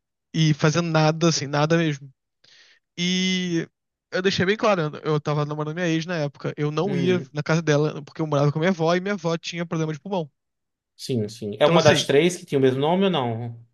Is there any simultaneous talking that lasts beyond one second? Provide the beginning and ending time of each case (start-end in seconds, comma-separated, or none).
none